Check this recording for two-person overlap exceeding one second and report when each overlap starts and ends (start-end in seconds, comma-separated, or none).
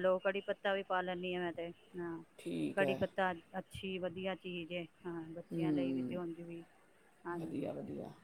none